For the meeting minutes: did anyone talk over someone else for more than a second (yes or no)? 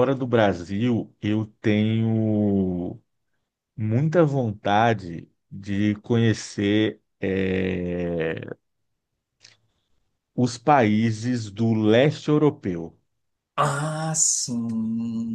no